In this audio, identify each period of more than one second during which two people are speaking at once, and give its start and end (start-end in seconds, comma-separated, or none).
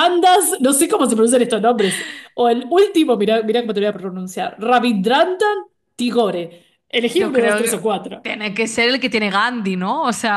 7.0-8.3